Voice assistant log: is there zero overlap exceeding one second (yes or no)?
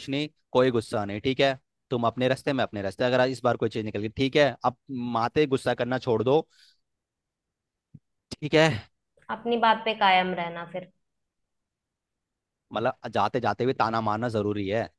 yes